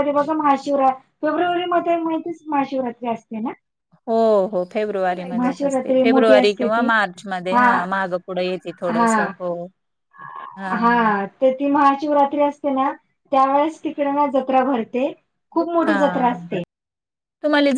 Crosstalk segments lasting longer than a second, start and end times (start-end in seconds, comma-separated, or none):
5.4-6.9